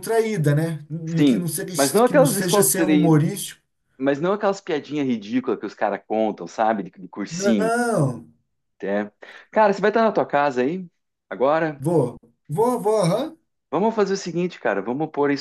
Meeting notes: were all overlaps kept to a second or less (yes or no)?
no